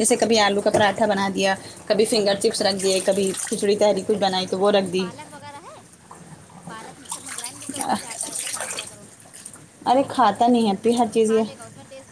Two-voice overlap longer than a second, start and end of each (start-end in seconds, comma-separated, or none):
9.9-11.4